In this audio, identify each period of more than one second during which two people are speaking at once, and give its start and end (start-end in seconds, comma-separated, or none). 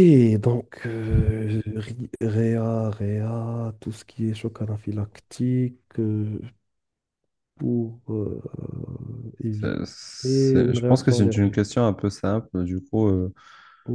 9.5-11.6